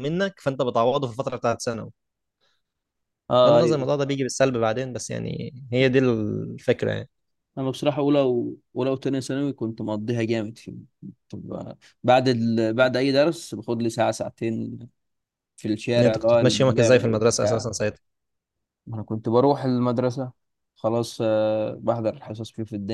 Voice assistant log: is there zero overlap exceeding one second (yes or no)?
no